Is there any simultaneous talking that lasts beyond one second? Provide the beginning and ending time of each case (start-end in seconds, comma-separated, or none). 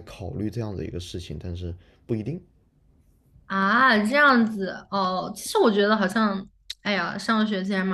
none